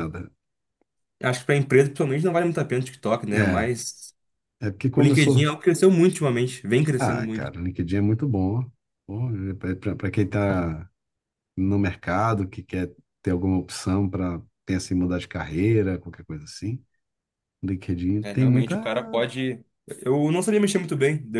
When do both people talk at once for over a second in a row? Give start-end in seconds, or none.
none